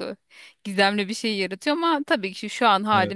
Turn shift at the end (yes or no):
no